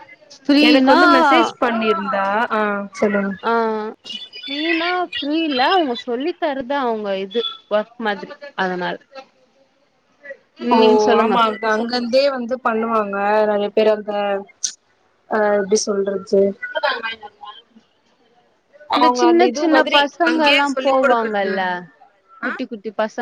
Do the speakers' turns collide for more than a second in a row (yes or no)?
yes